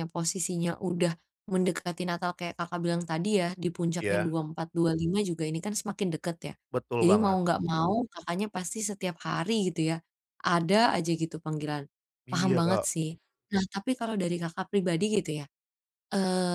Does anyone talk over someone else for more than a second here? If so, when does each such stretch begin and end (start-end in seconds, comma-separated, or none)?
none